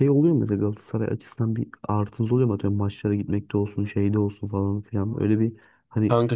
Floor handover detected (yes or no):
no